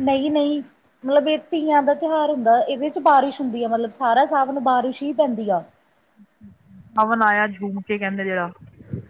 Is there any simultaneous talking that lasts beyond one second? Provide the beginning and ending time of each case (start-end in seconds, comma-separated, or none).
none